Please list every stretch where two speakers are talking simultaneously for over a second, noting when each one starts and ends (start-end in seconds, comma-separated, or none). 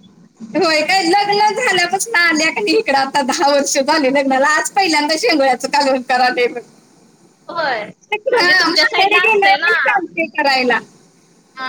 8.7-9.9